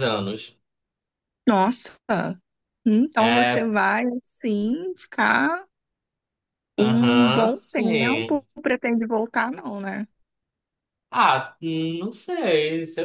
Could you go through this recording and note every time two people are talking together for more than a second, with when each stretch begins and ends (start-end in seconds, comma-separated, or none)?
6.8-8.4